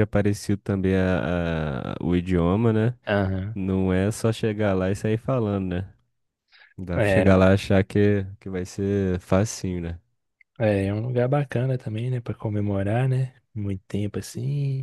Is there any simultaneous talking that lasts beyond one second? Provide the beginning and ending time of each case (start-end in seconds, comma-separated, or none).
none